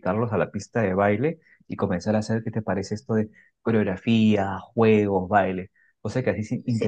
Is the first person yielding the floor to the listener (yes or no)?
yes